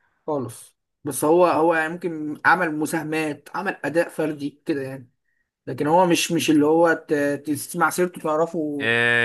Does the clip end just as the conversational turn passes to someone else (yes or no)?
yes